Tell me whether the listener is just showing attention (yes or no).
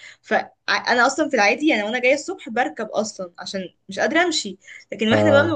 yes